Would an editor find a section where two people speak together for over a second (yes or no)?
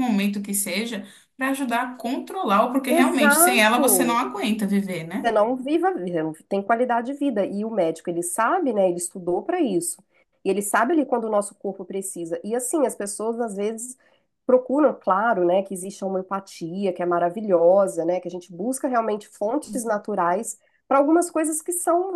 yes